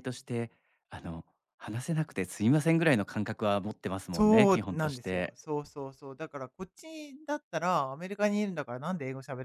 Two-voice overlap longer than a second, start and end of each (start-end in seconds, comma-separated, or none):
4.1-5.3